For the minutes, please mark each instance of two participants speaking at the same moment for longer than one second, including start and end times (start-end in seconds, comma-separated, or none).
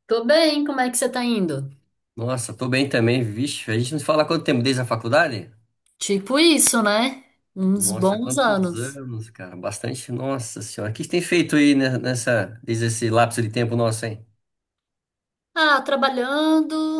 7.8-9.0